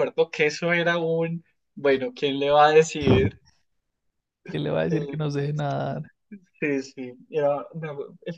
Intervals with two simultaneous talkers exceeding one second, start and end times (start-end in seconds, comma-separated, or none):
none